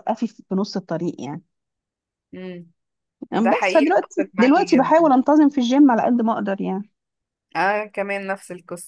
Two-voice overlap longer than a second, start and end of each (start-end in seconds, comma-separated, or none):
3.4-5.1